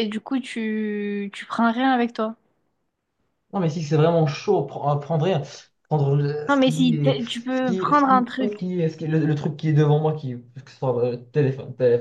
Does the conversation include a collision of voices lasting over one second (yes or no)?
yes